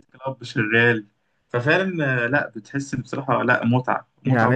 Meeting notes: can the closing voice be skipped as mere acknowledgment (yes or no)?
no